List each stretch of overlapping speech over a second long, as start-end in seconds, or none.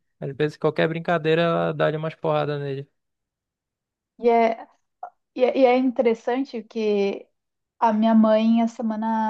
none